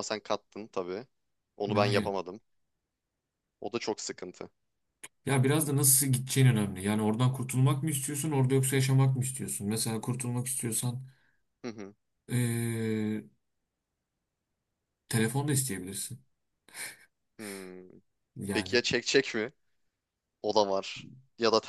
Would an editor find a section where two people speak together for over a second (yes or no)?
no